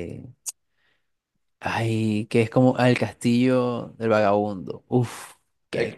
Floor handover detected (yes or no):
yes